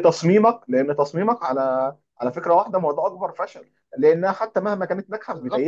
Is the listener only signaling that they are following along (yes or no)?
yes